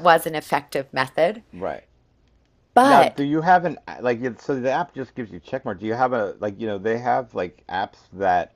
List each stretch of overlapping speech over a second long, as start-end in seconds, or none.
none